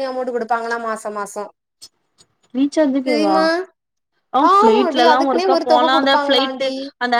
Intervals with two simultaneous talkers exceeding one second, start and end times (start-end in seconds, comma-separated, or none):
4.5-6.7